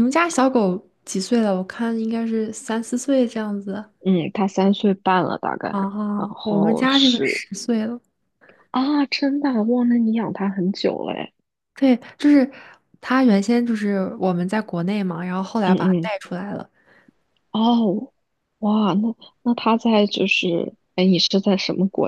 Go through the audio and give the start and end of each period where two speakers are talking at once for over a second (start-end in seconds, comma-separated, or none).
6.2-7.4